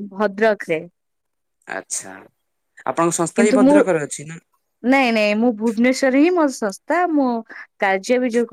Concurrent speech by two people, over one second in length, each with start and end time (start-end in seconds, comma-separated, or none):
none